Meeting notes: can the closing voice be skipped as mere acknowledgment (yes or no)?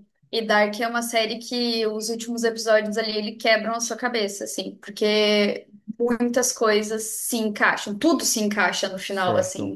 yes